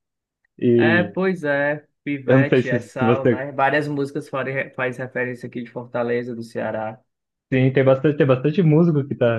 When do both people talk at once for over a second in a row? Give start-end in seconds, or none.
2.2-3.5